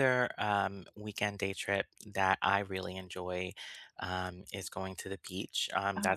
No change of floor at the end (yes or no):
yes